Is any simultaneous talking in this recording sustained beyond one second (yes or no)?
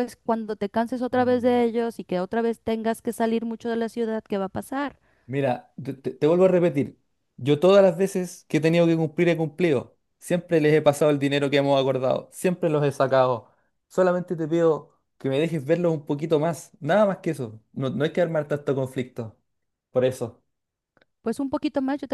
no